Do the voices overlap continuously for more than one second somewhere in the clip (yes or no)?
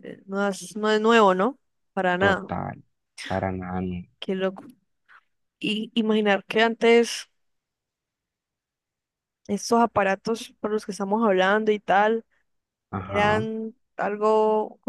no